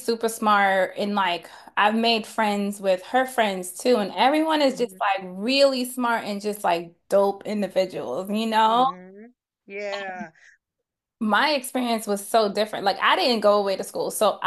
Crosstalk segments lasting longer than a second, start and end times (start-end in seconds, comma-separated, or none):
none